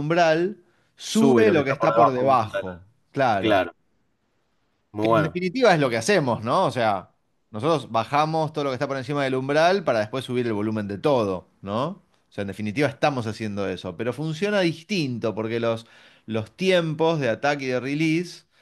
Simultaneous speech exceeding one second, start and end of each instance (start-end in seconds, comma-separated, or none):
1.1-2.7